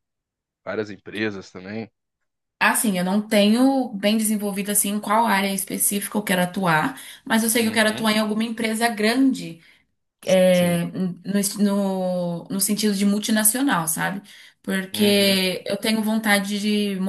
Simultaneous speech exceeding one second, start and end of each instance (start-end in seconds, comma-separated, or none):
none